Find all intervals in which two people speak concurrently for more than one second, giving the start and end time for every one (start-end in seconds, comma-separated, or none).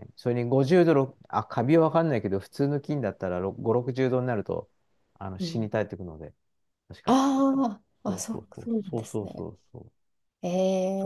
8.1-9.5